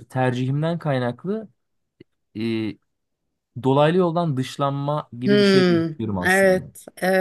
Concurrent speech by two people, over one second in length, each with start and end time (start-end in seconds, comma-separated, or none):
5.2-6.7